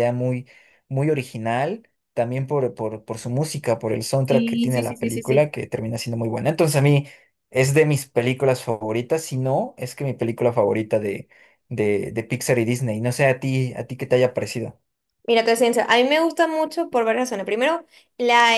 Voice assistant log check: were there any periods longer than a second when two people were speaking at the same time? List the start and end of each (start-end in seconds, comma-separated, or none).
4.2-5.5